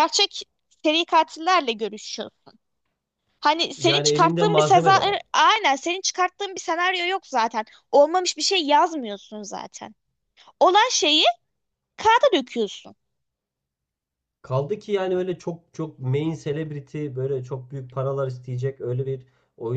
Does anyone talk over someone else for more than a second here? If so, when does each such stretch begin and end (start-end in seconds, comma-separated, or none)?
3.8-5.2